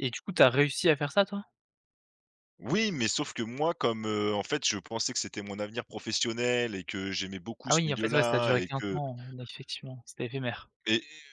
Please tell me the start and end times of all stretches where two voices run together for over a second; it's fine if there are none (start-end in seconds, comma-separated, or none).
7.7-9.0